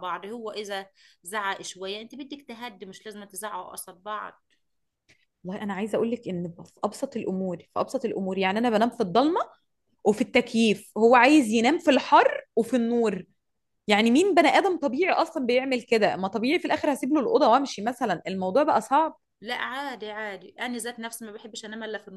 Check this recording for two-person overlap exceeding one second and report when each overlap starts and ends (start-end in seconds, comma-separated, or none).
none